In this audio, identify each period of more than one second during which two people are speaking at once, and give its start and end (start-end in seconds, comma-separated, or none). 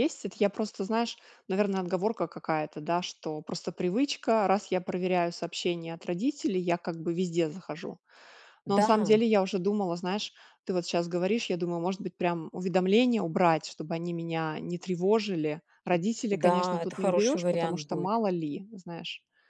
16.3-18.2